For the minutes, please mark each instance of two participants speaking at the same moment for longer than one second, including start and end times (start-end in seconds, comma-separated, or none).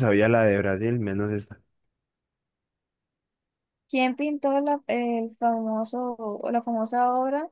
none